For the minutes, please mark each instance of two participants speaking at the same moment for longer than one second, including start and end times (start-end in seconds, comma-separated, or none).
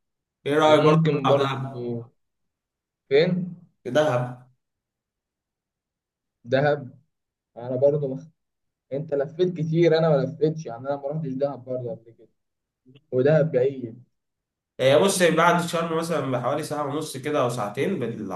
0.6-1.9